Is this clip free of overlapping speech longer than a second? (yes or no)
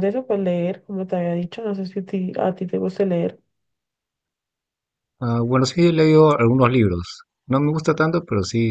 yes